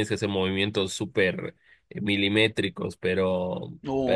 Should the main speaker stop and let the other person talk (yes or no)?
yes